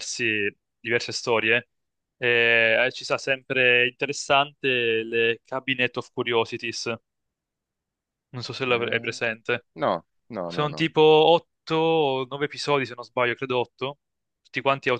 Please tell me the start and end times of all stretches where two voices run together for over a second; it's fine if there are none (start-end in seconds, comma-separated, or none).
none